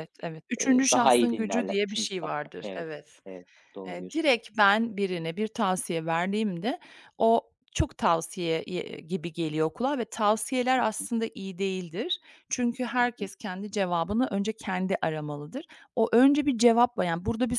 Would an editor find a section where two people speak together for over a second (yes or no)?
yes